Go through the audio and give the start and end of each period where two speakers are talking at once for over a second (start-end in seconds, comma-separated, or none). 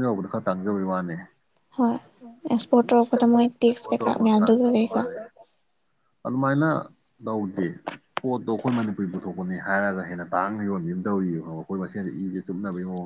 2.9-5.0